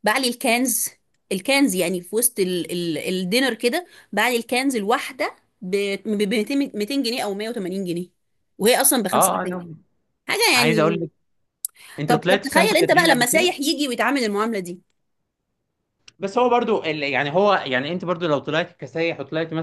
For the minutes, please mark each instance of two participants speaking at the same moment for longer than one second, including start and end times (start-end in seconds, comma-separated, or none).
12.1-13.6